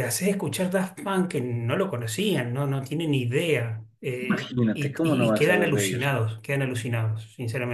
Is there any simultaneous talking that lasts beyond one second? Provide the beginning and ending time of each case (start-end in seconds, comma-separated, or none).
4.3-6.1